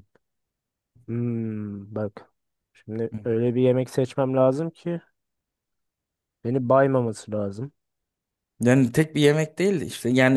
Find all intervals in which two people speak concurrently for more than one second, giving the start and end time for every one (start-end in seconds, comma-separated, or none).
none